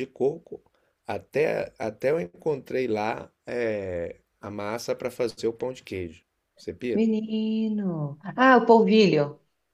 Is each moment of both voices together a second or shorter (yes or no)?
yes